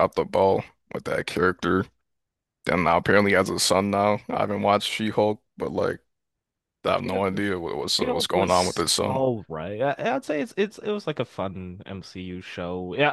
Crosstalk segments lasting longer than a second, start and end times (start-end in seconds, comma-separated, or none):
8.0-9.2